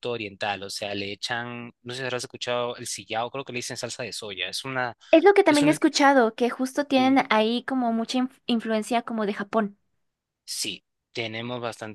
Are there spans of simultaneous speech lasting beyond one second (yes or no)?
no